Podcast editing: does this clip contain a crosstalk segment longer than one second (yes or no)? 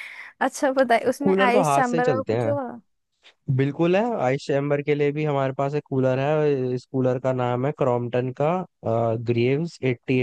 yes